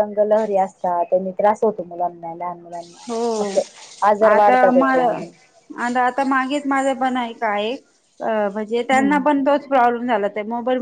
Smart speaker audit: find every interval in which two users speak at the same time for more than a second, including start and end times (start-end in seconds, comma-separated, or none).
none